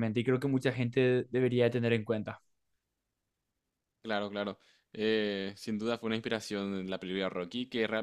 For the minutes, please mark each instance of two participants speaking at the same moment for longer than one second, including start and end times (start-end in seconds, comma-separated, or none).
none